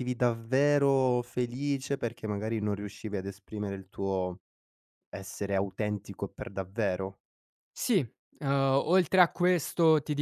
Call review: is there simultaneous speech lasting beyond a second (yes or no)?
no